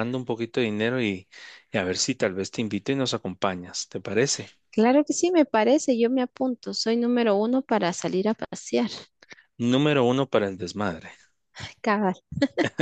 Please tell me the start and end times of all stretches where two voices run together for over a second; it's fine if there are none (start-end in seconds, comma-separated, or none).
none